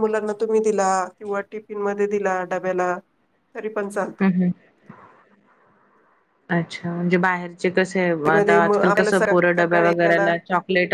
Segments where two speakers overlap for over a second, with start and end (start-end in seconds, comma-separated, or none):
8.3-10.3